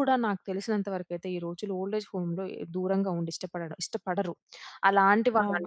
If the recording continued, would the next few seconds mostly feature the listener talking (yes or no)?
no